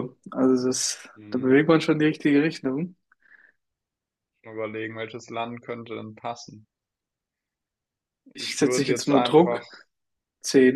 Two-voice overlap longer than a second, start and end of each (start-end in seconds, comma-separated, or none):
8.3-9.6